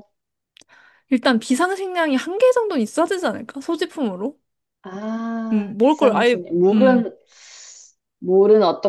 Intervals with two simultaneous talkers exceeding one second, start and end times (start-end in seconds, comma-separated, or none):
5.5-7.0